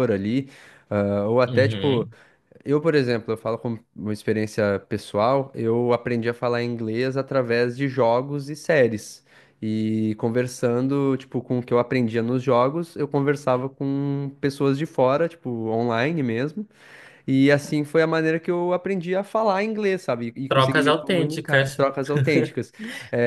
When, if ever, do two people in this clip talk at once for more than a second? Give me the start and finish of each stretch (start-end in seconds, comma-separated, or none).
20.5-21.8